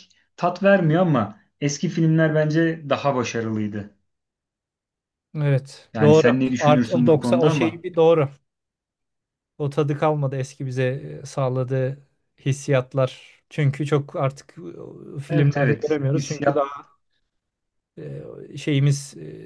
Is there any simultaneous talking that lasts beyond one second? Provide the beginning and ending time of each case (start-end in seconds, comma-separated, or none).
5.9-7.8, 15.3-16.6